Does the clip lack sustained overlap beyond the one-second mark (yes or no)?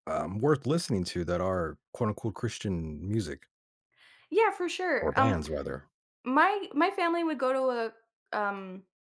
yes